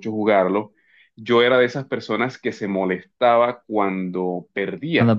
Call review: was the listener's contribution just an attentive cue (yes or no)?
yes